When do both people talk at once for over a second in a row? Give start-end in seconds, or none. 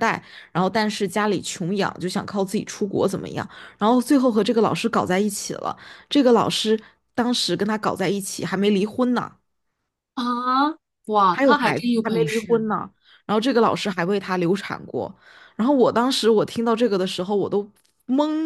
11.3-12.7